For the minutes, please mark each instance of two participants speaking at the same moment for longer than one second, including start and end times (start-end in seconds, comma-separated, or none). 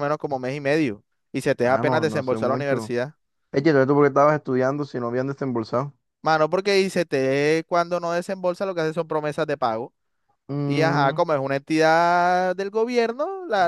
1.6-3.0